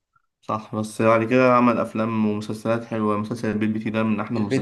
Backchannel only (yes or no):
no